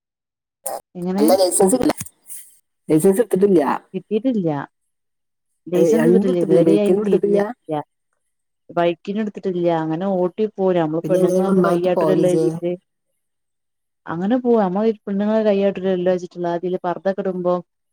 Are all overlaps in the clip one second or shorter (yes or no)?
no